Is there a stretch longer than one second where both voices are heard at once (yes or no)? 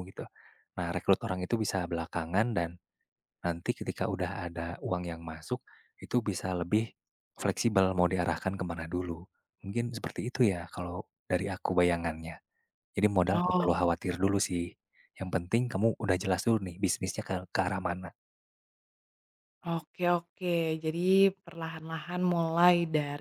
no